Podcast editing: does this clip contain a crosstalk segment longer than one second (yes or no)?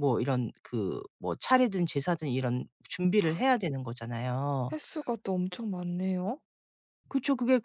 no